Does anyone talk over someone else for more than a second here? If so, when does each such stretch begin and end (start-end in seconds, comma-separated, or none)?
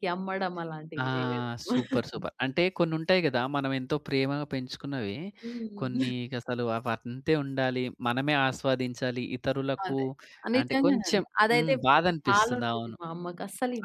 10.6-13.0